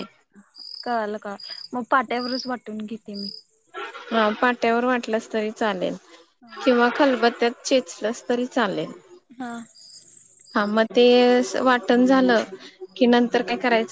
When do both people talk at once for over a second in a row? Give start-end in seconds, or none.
none